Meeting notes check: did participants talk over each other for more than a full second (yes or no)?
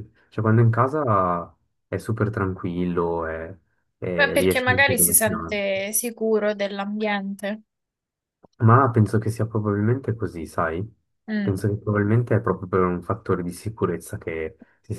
yes